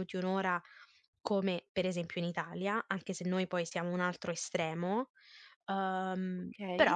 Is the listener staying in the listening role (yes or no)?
no